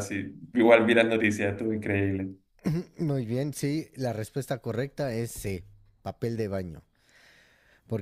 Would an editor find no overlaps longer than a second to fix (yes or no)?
yes